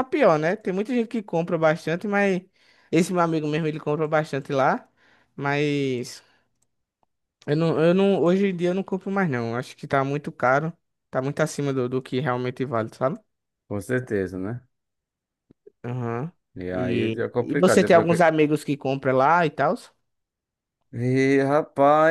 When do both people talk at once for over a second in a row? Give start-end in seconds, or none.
16.7-18.2